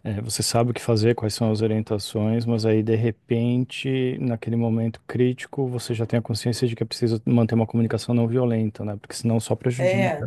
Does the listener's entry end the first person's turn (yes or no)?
yes